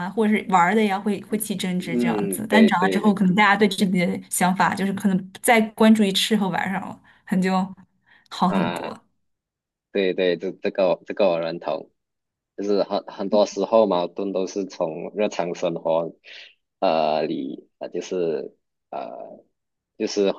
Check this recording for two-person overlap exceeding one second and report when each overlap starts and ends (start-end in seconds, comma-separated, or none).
1.8-3.2